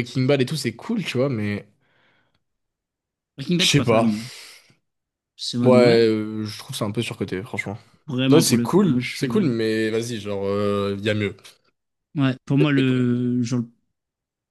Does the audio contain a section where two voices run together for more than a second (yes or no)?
yes